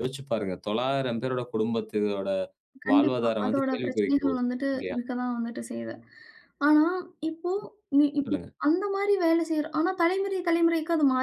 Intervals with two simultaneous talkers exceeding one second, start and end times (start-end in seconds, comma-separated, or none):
2.9-5.0